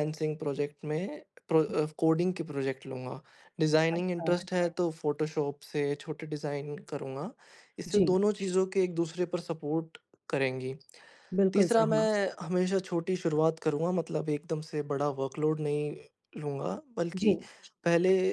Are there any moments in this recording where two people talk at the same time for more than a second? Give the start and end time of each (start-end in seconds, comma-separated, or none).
none